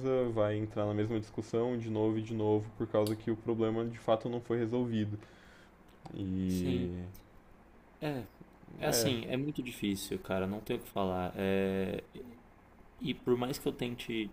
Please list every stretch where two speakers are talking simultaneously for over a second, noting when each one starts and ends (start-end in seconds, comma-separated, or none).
none